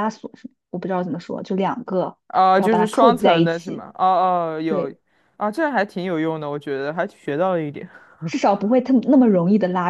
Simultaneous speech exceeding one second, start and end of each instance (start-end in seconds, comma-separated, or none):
2.6-3.9